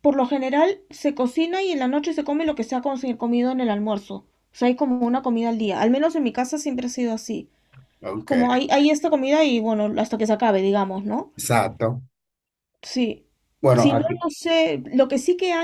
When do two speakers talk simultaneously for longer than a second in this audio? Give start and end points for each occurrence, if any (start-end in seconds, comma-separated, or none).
none